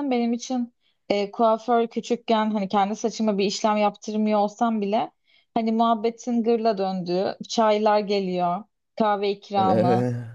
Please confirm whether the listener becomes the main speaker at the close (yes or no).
no